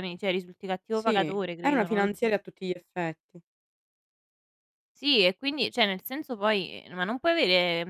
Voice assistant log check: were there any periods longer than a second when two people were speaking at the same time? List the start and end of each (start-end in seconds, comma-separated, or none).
0.9-2.3